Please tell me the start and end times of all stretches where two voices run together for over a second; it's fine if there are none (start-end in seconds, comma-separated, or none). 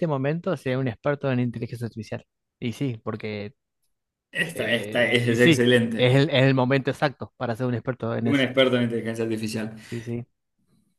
4.5-6.3